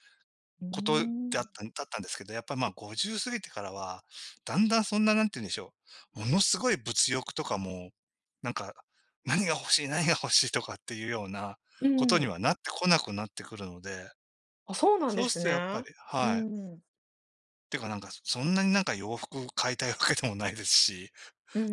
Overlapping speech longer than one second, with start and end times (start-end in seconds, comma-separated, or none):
15.1-16.6